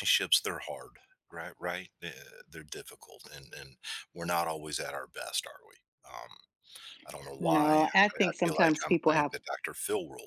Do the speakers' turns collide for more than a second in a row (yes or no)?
yes